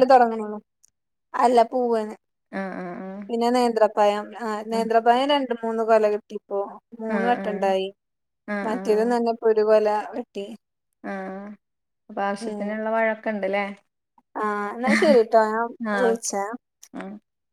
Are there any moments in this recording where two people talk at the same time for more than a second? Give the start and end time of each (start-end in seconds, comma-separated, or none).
none